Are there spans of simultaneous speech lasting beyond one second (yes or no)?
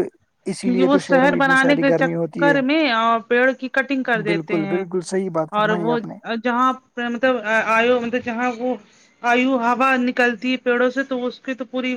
yes